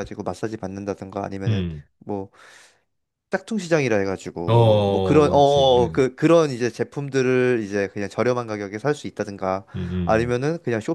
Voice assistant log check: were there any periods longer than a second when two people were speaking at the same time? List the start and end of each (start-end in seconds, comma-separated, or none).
4.5-6.0